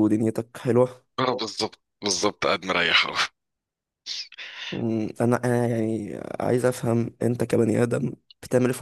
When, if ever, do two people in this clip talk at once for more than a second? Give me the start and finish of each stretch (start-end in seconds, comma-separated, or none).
none